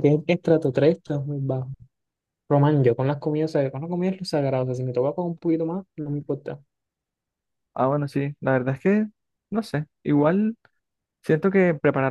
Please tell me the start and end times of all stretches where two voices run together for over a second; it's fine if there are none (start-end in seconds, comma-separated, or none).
none